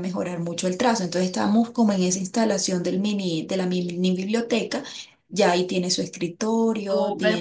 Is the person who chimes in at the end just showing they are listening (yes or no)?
no